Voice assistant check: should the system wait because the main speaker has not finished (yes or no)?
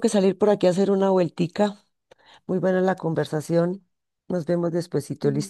no